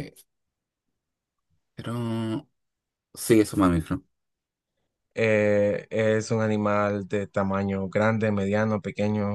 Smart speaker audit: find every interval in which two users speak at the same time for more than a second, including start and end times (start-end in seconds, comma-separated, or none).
none